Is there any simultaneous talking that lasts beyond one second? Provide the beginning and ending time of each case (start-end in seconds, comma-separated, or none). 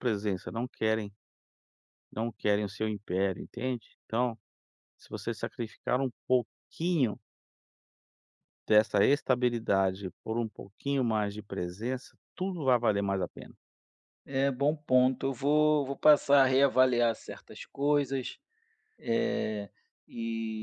none